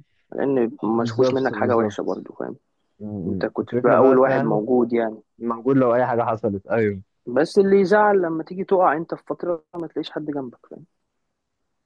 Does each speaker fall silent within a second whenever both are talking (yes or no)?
no